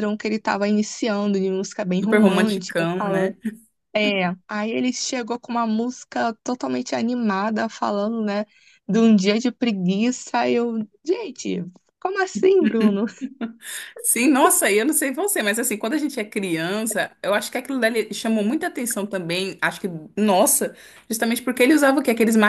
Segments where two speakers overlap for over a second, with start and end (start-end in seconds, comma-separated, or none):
2.0-3.4